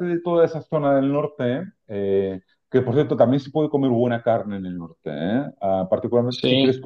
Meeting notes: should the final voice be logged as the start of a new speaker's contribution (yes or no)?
no